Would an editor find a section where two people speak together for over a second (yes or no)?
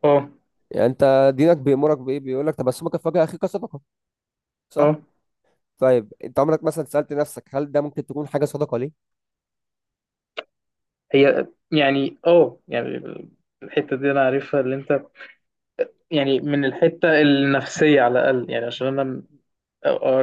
no